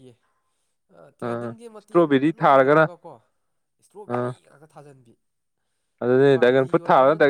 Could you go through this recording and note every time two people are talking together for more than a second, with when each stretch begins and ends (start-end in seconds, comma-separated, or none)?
1.2-2.8